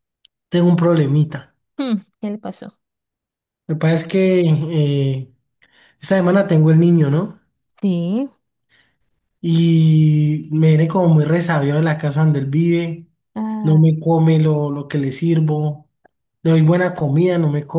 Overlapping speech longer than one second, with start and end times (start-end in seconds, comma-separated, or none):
none